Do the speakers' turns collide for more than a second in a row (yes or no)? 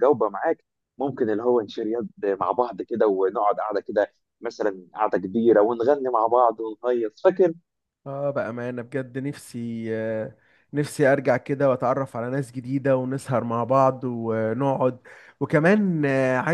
no